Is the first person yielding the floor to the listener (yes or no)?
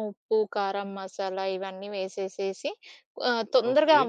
no